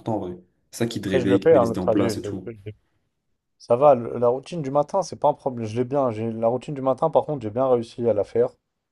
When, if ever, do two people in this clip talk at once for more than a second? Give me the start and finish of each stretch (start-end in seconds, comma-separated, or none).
1.1-2.5